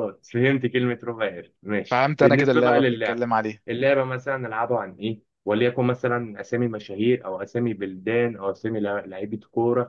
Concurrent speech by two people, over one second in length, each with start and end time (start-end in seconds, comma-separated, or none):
1.9-3.2